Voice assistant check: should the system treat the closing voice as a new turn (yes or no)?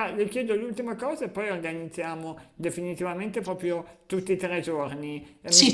no